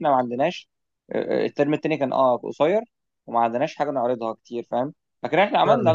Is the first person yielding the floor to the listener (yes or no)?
no